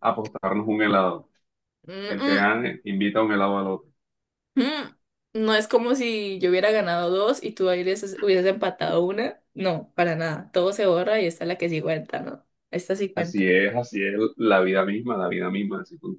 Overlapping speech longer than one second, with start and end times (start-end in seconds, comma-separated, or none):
none